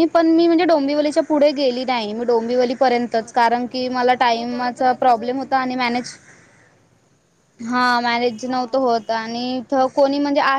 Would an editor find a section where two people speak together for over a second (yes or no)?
yes